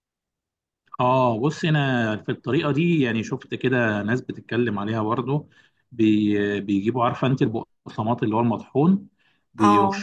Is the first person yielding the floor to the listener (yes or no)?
no